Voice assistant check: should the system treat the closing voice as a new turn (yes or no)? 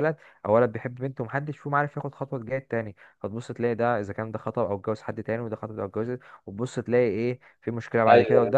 no